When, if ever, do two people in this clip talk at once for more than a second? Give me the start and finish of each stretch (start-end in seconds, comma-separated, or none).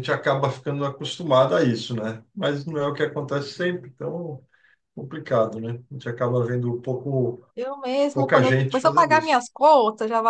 8.1-9.4